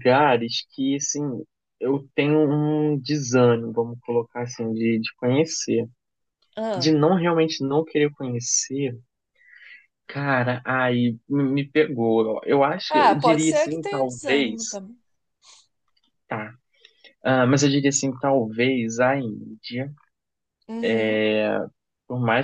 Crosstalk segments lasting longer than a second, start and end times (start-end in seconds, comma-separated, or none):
12.9-14.8